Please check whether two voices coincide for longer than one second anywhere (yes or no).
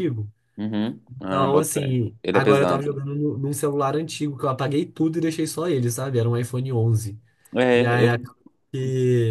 yes